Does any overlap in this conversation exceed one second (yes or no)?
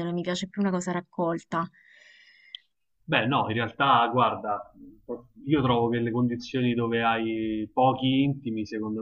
no